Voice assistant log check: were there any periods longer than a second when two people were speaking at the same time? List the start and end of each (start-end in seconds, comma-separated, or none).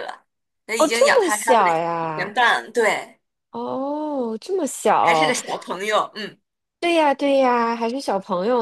0.8-2.4